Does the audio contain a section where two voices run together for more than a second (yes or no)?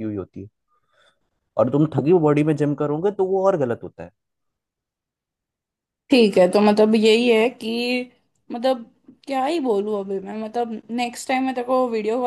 no